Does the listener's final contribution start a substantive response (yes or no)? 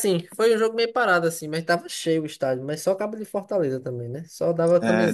no